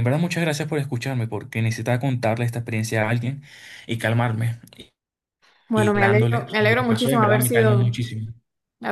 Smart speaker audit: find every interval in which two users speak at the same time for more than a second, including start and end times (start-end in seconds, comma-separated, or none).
5.7-8.0